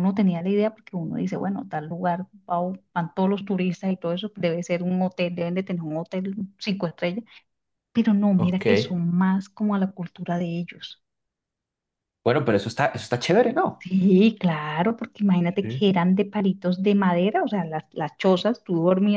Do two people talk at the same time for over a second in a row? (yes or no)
no